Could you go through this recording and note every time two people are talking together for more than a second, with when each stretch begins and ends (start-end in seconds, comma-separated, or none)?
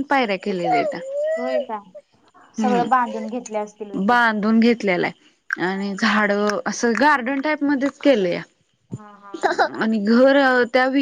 2.6-4.2